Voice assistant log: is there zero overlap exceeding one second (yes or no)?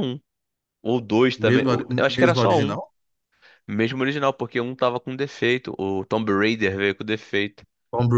no